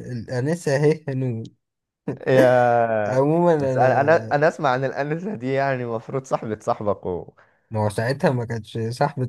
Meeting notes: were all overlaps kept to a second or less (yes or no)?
no